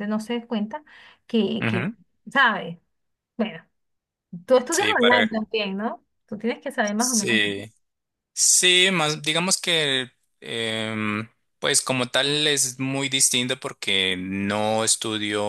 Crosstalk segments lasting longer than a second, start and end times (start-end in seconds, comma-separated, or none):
none